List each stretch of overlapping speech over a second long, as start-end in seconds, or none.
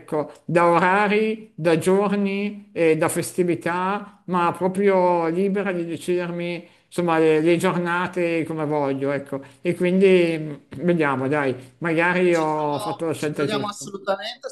12.3-13.8